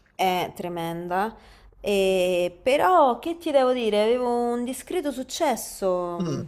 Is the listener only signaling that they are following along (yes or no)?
yes